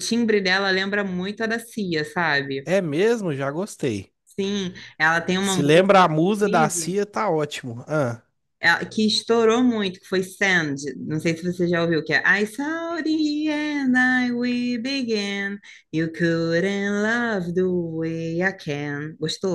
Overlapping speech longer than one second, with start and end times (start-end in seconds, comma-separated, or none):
5.4-7.0